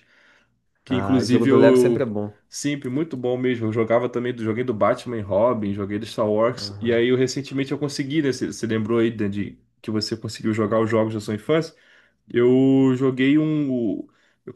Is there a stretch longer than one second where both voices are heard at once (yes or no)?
yes